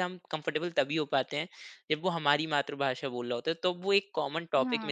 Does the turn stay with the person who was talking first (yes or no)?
yes